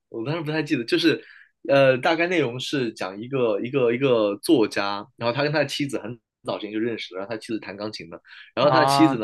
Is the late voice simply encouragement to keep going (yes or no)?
yes